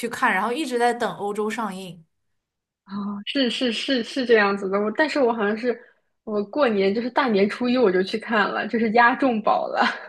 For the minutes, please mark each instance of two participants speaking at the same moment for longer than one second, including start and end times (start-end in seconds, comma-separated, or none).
none